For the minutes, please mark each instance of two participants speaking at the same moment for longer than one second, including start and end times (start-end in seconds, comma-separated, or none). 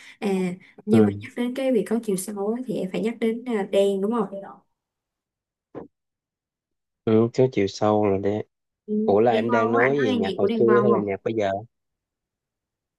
9.0-11.1